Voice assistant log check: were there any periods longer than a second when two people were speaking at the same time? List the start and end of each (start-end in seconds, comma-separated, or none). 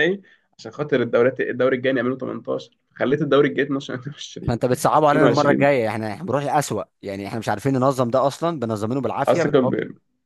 4.5-5.7